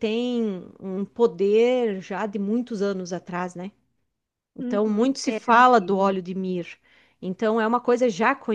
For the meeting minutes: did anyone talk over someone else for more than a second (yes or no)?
yes